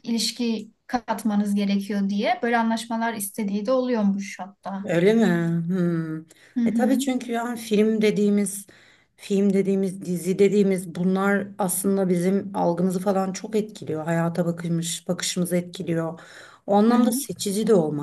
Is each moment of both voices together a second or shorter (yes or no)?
yes